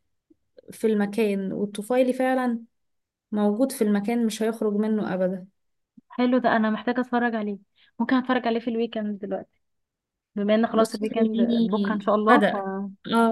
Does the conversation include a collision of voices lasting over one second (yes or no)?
yes